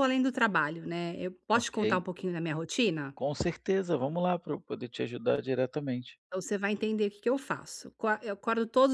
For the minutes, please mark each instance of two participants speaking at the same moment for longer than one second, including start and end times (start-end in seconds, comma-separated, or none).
none